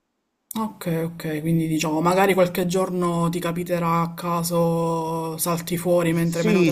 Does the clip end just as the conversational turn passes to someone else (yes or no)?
yes